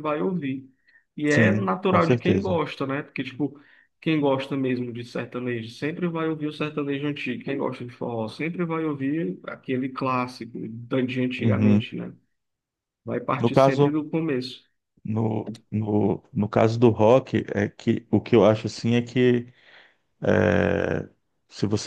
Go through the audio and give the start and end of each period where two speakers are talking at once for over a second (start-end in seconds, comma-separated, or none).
1.2-2.6